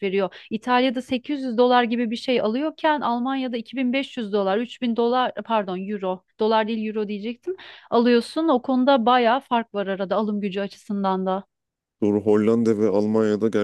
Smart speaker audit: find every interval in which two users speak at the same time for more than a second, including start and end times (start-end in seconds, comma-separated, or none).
none